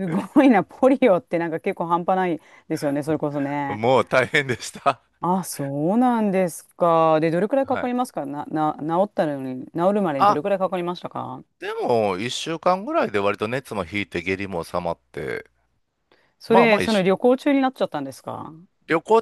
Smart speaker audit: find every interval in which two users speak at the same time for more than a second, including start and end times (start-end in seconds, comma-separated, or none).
none